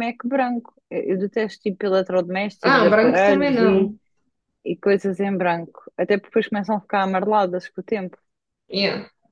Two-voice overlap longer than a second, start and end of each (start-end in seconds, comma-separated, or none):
2.6-3.9